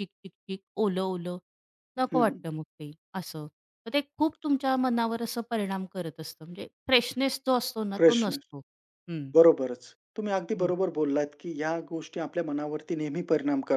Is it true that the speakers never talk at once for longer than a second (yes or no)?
yes